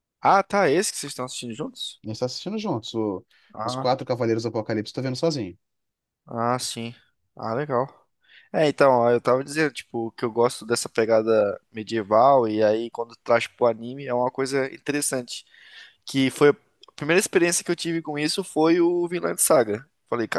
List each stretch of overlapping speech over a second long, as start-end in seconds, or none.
none